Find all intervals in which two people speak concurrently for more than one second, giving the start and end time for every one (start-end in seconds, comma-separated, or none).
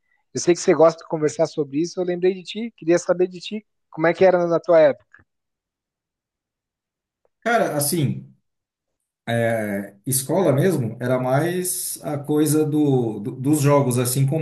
none